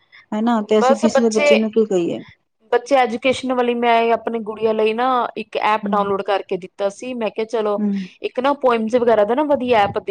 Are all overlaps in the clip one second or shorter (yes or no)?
yes